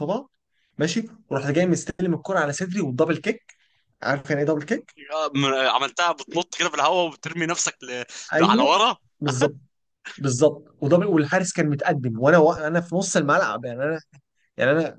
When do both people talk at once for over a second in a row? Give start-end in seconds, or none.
none